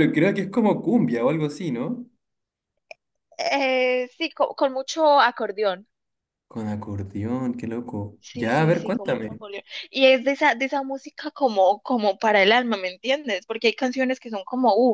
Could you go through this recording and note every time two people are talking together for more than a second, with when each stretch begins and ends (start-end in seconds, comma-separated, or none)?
8.2-9.4